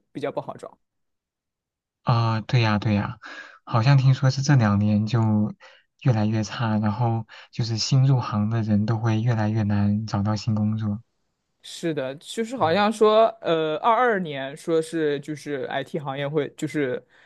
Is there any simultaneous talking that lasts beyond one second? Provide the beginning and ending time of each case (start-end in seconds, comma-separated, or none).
none